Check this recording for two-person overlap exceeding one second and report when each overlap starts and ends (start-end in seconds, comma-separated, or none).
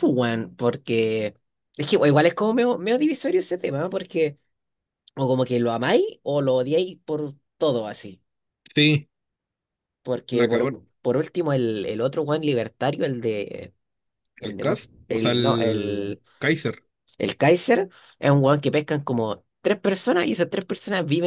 14.4-16.2